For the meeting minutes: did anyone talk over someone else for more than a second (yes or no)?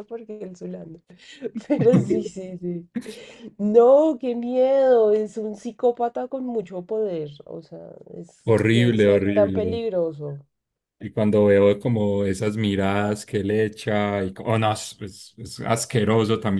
yes